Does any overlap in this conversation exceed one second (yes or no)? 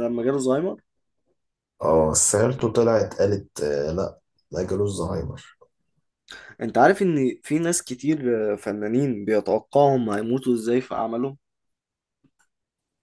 no